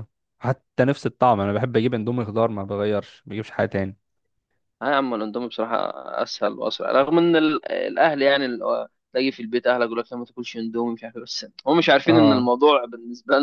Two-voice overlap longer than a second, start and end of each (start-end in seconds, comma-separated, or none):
none